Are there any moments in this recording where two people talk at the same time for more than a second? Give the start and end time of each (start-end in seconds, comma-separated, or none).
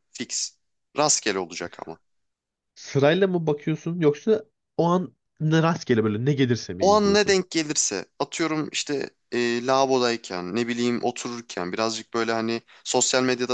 none